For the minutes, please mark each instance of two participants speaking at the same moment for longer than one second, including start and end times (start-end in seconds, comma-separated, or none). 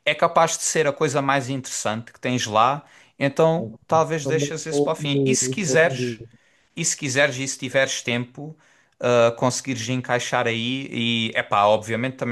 4.2-6.2